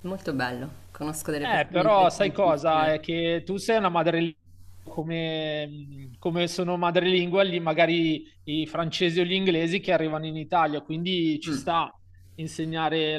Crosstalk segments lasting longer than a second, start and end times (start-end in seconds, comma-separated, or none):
1.4-3.0